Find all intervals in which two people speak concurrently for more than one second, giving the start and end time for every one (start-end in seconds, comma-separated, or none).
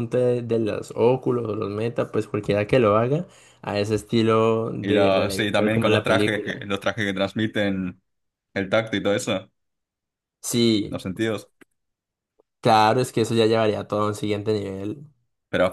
4.8-6.6